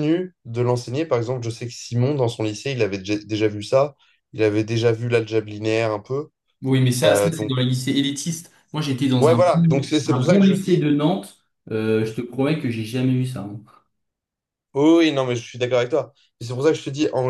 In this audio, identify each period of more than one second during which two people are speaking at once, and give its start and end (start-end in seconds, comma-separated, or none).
9.2-10.9